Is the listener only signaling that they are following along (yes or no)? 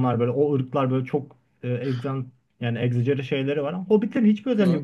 yes